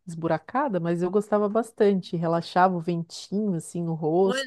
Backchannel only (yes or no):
no